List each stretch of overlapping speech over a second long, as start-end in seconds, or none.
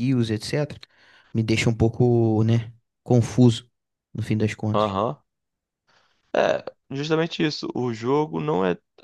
none